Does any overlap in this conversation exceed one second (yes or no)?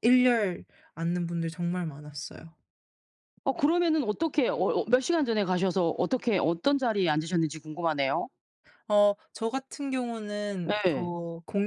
no